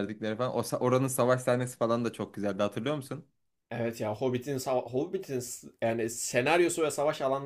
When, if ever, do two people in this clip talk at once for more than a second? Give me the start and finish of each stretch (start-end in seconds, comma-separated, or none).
none